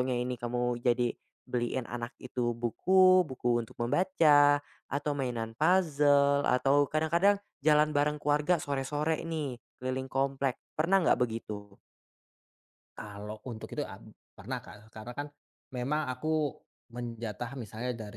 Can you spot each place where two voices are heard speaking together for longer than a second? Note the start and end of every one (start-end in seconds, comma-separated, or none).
none